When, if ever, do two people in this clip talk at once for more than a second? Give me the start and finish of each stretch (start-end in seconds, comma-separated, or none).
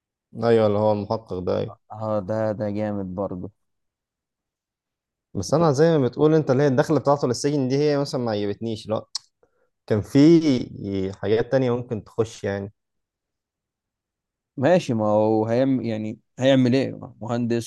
none